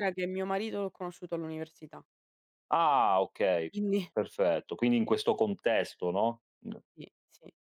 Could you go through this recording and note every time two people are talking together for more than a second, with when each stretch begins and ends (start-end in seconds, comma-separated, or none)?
none